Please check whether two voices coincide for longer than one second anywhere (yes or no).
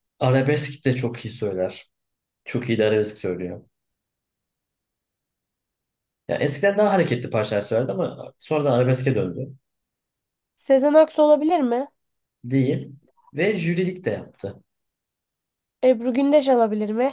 no